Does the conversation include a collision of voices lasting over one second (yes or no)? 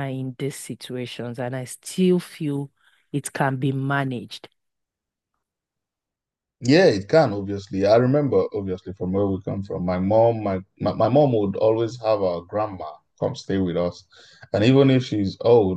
no